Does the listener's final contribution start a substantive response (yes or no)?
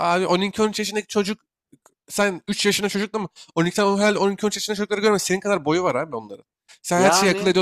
no